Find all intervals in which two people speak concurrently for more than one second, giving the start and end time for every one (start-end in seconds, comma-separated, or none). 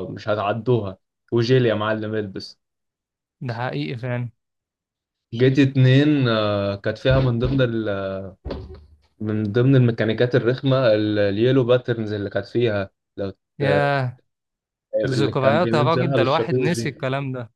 15.0-17.1